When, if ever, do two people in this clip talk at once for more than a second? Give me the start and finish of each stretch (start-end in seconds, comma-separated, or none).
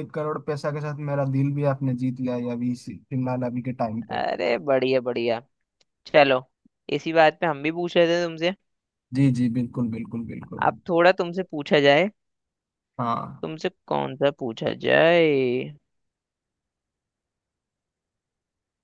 none